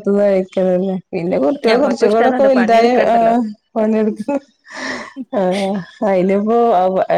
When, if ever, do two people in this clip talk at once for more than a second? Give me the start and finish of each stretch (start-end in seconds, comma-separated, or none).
1.7-3.4